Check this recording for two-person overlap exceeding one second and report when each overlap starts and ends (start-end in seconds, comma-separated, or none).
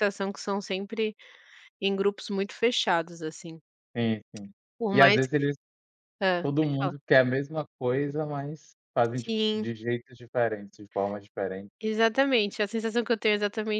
none